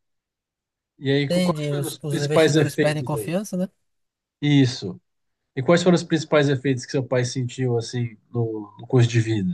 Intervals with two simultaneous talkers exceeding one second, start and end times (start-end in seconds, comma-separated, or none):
1.3-3.3